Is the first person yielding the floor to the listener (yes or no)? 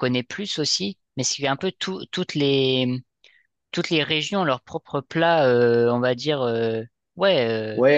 yes